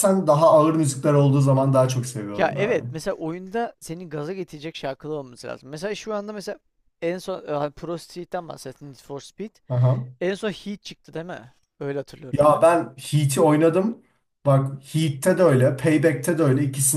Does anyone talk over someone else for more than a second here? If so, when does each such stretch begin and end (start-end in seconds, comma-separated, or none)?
none